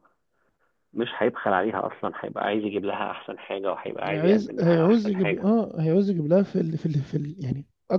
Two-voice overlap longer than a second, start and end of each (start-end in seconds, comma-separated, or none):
4.0-5.5